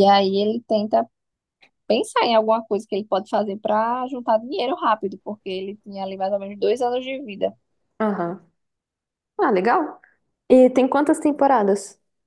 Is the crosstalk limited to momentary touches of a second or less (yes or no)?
yes